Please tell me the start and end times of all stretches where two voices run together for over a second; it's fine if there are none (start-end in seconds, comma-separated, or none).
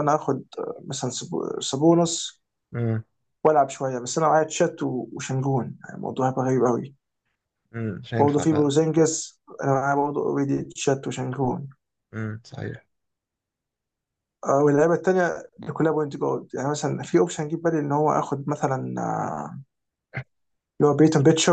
none